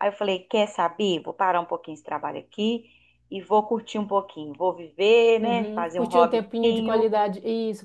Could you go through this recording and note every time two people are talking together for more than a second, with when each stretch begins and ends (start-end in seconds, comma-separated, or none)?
5.4-7.1